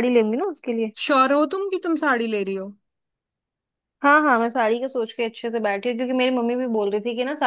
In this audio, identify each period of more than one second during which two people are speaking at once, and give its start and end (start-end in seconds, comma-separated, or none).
none